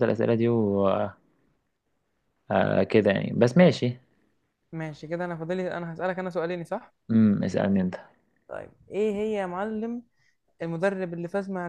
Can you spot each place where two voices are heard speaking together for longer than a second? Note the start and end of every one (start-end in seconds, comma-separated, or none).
none